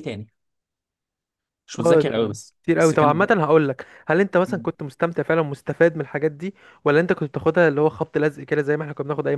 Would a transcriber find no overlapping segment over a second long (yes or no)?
no